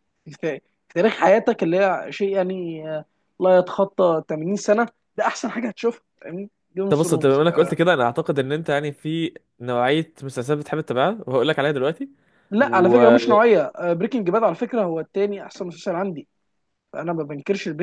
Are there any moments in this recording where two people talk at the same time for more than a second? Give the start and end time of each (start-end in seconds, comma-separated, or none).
none